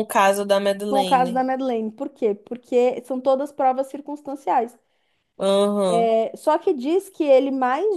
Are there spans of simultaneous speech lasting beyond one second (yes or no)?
no